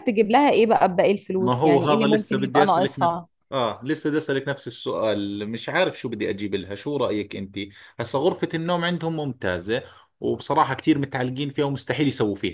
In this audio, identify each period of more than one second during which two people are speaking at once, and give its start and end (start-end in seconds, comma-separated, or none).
1.4-3.3